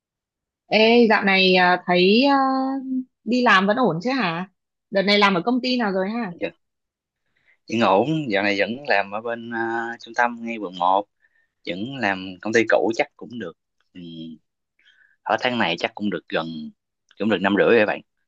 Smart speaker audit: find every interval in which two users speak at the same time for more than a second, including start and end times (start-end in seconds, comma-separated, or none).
none